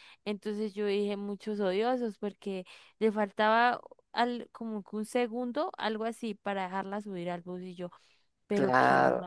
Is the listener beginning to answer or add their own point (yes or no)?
no